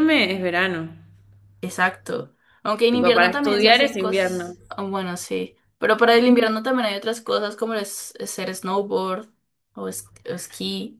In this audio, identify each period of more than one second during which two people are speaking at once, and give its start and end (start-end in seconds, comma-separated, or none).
2.9-4.5